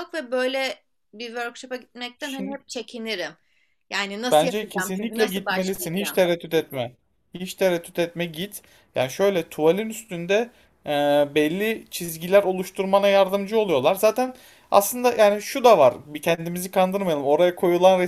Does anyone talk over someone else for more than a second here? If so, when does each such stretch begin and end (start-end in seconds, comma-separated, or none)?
4.3-6.2